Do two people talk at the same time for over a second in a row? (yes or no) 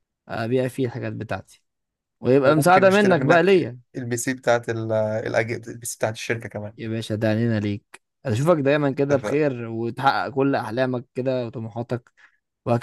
yes